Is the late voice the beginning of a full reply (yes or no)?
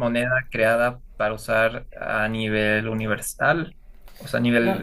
yes